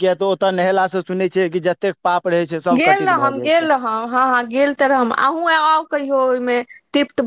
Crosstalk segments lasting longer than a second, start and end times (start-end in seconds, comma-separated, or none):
none